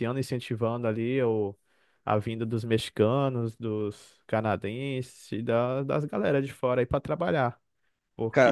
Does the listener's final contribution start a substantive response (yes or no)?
yes